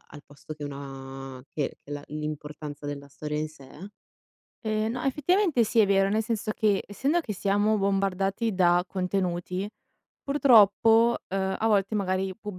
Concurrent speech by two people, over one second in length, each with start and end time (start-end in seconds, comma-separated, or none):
none